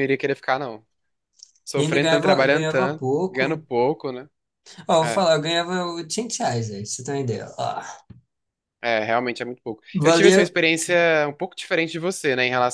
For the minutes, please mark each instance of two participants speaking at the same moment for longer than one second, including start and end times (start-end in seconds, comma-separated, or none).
1.8-3.6